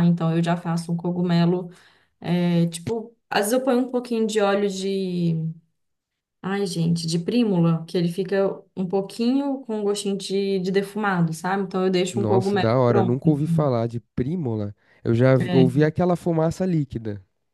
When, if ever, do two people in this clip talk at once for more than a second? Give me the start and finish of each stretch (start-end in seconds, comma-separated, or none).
12.1-13.7